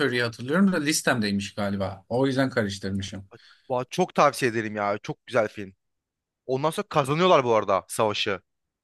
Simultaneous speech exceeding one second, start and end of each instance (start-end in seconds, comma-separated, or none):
none